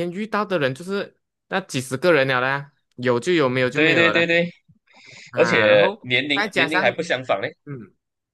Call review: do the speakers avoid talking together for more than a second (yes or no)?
no